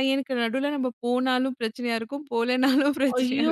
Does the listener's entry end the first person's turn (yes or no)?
yes